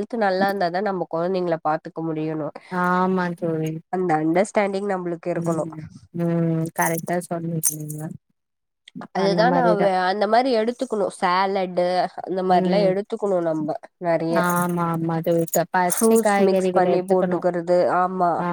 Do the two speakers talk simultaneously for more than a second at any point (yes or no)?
yes